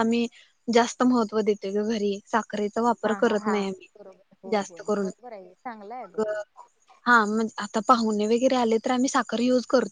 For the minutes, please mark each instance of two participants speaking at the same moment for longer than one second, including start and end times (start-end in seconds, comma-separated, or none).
none